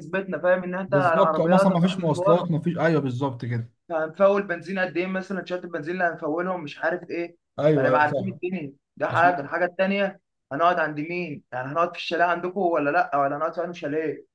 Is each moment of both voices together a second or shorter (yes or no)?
no